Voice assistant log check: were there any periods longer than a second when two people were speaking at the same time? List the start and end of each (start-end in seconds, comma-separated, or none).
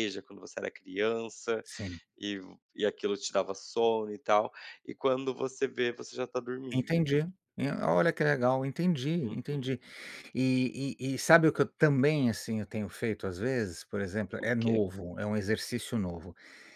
none